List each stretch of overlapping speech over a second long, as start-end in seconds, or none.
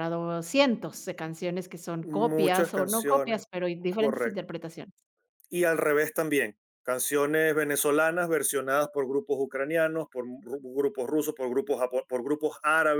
2.0-4.4